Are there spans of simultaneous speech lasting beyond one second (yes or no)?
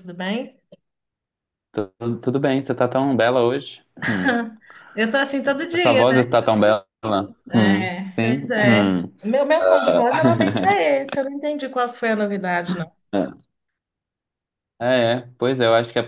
yes